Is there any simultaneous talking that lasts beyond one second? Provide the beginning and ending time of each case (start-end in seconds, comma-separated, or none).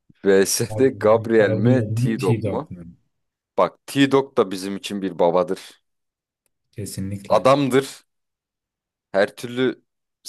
0.7-2.7